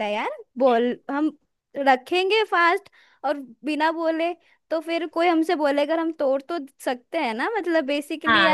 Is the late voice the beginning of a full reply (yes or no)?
yes